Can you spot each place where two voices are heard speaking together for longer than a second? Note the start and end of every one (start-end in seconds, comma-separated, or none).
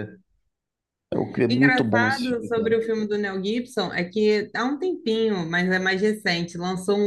1.5-2.7